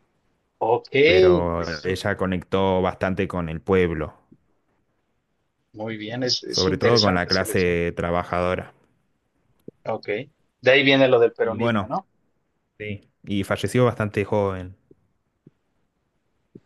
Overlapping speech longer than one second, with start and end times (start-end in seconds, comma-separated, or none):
6.5-7.8